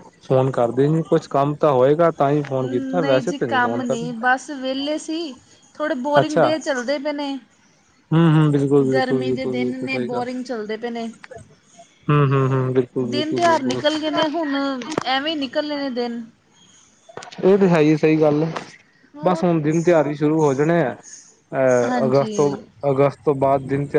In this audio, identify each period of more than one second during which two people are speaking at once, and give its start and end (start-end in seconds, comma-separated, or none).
8.9-10.2